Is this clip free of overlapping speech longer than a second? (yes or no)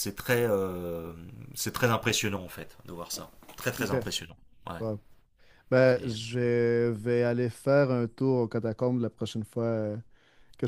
yes